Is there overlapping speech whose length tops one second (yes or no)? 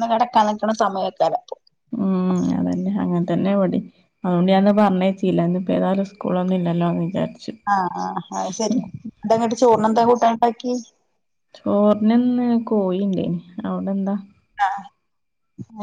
no